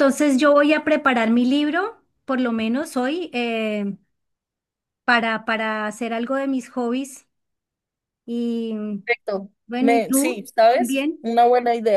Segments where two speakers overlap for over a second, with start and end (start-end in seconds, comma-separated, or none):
9.7-11.3